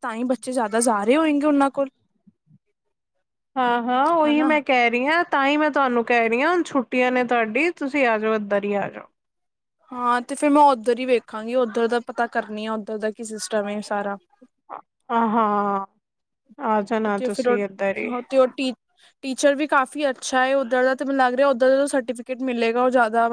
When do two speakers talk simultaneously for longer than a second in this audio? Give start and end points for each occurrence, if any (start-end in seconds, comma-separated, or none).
none